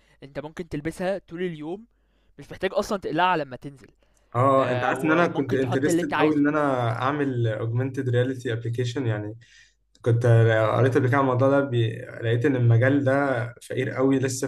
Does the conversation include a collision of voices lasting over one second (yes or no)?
yes